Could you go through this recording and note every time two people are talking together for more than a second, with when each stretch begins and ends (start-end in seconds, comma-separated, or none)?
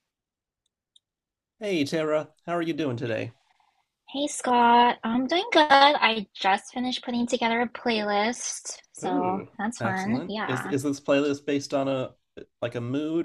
9.0-10.7